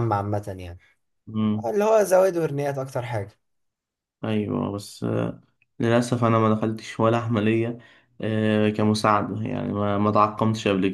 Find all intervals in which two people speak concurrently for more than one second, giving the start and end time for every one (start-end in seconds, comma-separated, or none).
none